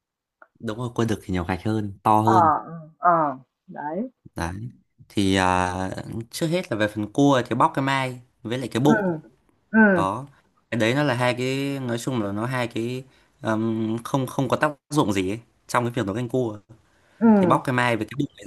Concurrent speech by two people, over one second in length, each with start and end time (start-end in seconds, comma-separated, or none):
none